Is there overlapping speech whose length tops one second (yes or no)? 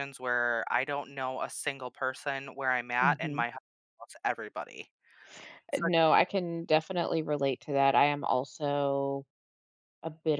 no